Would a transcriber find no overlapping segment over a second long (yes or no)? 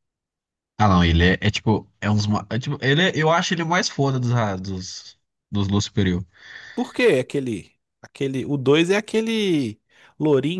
yes